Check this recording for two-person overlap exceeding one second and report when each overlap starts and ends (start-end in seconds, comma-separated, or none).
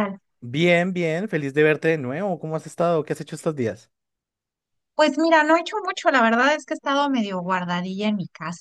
none